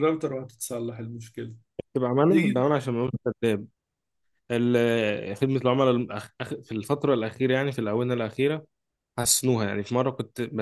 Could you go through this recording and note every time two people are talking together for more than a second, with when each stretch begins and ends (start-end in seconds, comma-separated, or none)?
none